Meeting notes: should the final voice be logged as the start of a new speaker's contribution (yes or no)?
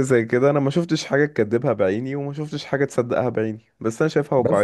yes